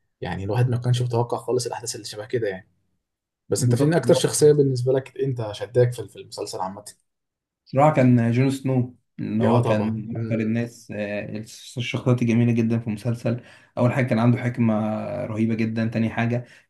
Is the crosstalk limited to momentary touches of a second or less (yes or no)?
no